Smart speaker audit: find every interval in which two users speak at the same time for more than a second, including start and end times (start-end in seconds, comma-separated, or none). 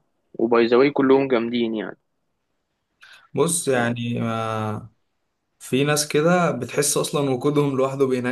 none